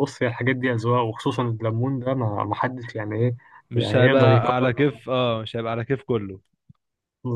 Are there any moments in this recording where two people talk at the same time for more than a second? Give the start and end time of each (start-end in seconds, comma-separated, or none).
3.7-5.0